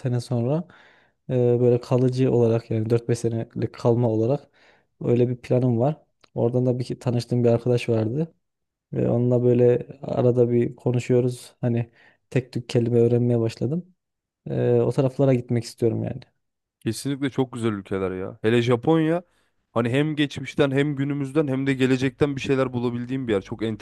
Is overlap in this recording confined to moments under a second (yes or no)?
yes